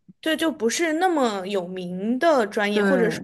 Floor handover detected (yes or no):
no